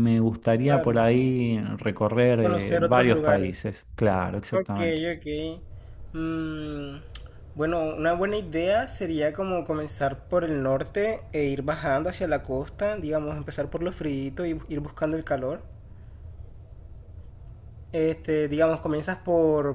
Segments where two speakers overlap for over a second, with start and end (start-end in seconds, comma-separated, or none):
2.4-3.7